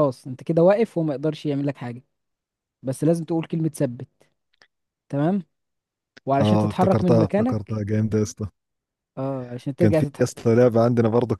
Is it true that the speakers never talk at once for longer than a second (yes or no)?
no